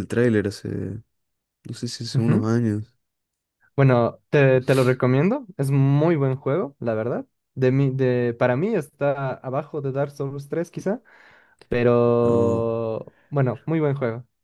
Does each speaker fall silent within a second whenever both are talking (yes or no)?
yes